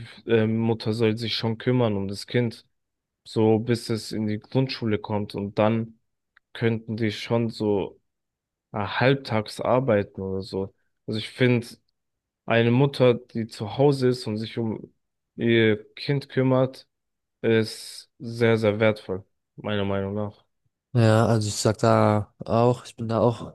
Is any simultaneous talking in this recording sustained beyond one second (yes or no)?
no